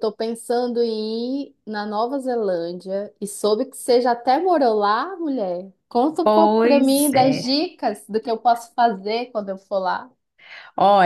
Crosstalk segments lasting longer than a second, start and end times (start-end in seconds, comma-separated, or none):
6.2-7.6